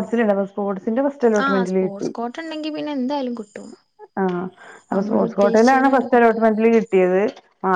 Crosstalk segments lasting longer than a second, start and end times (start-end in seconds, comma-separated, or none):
4.9-6.4